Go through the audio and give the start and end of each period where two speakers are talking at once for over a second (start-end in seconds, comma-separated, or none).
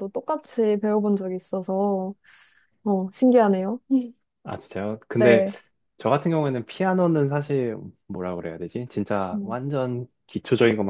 none